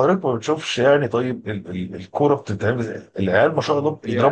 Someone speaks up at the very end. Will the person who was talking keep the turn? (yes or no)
yes